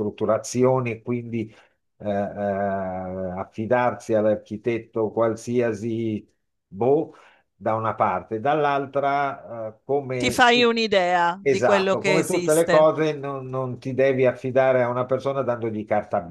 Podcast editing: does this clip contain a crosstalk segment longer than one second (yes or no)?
yes